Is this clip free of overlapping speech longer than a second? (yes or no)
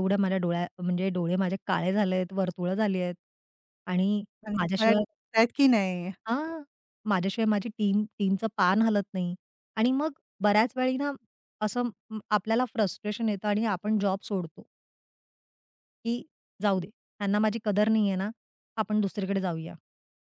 yes